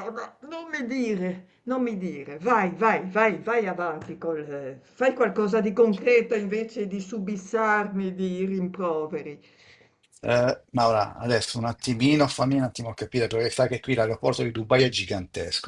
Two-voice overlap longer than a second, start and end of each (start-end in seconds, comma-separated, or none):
none